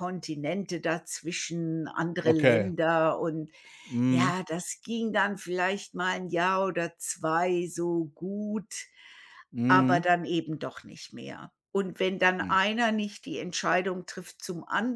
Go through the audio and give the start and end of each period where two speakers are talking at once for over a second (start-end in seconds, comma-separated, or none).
none